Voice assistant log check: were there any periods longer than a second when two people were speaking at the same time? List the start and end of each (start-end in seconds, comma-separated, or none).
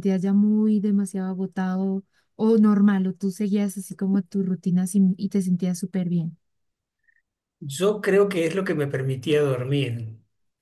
none